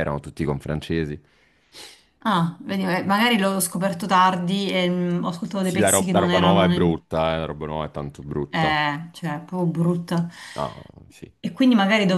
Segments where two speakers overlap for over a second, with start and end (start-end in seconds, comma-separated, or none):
5.6-7.0